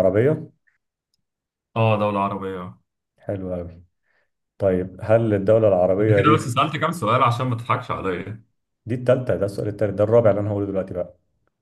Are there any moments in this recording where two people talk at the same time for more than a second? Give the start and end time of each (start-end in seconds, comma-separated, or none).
none